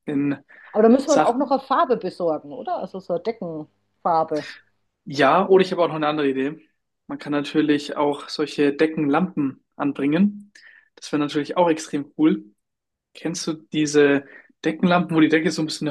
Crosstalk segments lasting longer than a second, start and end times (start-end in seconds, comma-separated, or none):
none